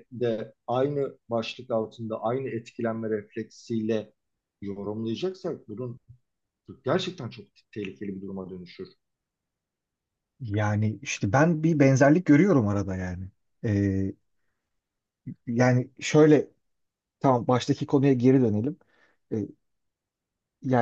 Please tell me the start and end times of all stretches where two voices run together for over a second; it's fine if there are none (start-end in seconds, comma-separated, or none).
none